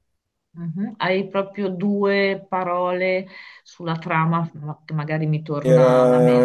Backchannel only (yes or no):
no